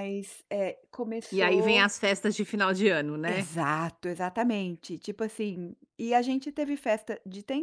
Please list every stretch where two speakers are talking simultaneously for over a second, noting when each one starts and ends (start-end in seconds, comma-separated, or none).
none